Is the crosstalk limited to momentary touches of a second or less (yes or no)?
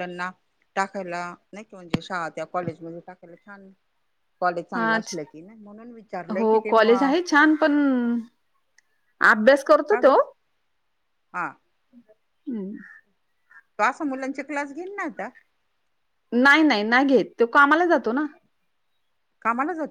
yes